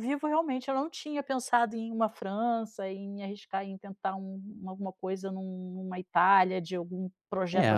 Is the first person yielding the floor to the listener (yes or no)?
yes